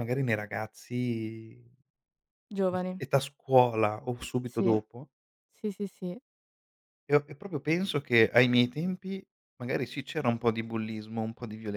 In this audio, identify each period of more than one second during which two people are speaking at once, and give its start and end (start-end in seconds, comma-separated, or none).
none